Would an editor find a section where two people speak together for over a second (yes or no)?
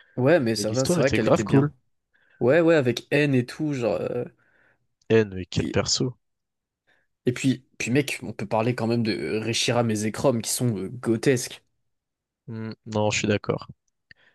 yes